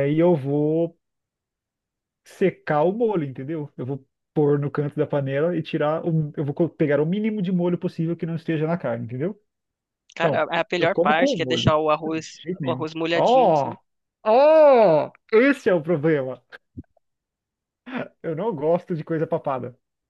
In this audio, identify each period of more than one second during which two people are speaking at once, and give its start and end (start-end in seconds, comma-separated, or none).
10.2-13.8